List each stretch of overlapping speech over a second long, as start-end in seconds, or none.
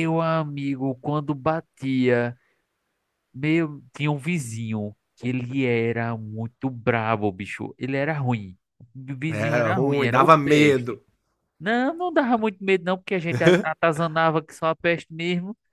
9.3-11.0